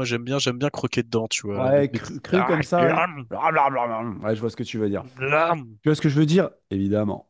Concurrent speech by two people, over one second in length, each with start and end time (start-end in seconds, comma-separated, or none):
1.5-3.3